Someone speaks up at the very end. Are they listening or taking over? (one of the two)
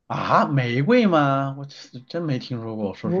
taking over